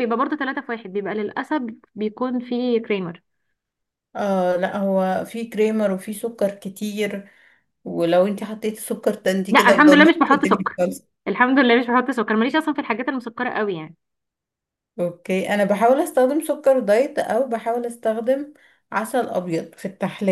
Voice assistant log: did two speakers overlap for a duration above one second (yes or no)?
yes